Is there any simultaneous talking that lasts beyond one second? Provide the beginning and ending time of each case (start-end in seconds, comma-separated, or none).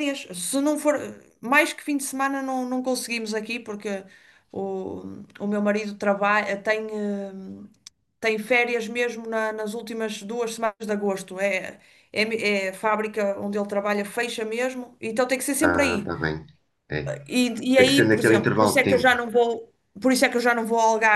17.7-19.1